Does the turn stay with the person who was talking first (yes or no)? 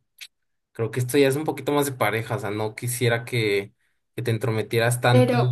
no